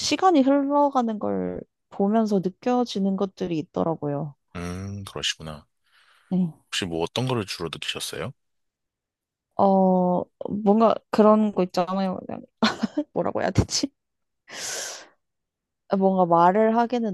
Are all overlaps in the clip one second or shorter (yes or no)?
yes